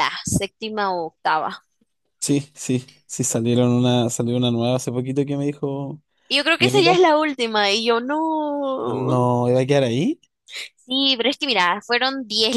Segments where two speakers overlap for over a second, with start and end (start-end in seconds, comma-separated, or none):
none